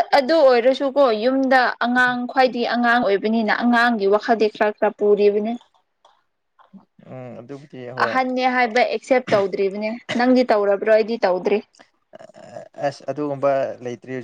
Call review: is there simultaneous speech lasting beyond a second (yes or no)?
no